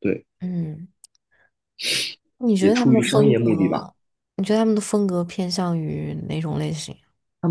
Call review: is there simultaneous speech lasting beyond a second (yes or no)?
yes